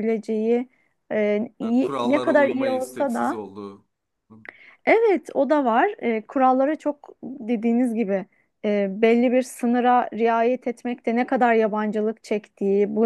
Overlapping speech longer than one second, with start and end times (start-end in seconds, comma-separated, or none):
1.6-3.4